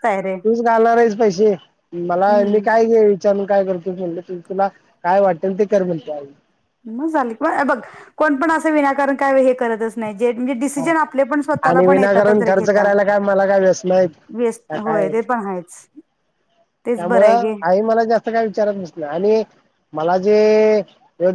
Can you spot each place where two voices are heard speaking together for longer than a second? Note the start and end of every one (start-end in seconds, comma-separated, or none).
11.7-12.9